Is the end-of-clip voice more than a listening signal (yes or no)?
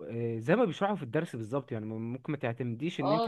yes